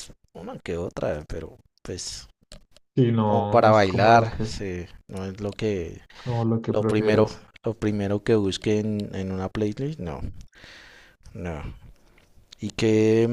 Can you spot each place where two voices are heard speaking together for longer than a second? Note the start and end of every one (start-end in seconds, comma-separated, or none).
3.2-4.5